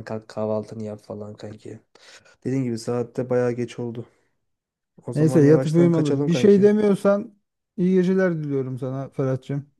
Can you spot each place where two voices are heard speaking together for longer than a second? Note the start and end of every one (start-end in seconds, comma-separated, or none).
5.2-6.7